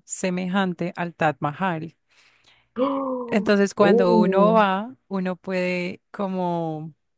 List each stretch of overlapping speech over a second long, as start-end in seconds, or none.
3.3-4.6